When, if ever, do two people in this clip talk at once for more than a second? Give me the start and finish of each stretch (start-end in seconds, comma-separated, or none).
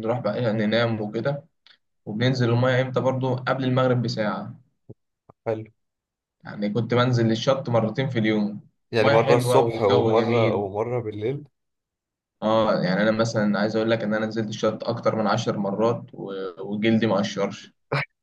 9.0-10.6